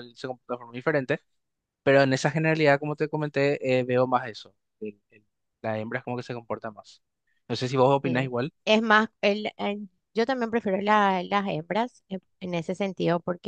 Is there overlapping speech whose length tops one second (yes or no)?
no